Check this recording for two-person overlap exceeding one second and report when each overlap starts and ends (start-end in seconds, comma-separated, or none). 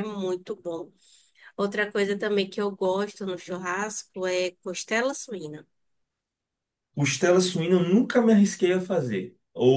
none